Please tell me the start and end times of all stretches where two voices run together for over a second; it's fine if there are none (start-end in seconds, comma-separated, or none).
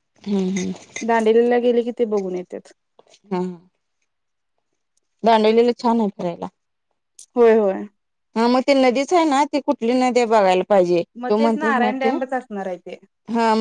11.2-12.9